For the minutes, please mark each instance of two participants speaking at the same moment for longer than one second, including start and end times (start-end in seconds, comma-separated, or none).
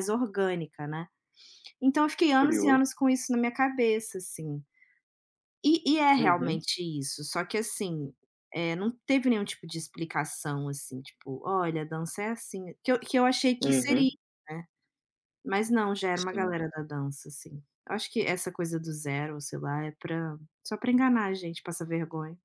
none